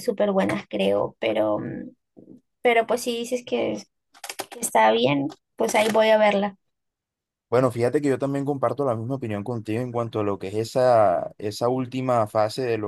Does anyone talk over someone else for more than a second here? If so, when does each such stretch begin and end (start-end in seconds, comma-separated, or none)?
none